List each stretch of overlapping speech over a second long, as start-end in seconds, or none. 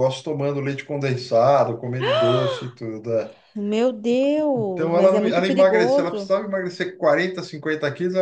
4.5-6.3